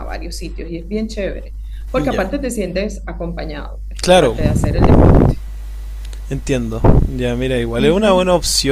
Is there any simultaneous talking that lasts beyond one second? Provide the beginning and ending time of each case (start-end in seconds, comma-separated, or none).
none